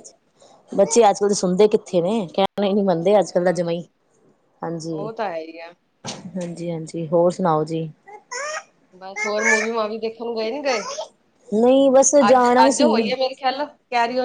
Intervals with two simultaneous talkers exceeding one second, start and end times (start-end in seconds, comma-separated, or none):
none